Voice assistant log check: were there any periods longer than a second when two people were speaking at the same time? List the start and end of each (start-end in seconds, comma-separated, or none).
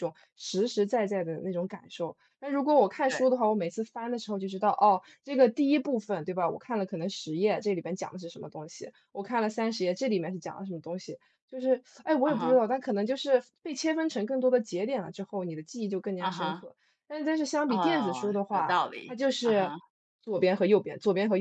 17.7-19.7